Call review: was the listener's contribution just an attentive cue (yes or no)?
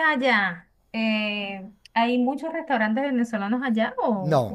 no